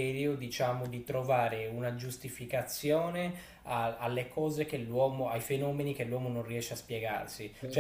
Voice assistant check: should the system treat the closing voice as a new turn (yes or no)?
no